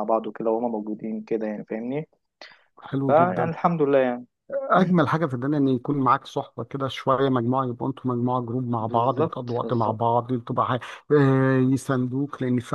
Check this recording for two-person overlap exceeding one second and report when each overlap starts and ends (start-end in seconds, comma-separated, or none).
8.8-10.0